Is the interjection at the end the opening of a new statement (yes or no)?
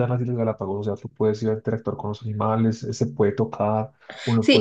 yes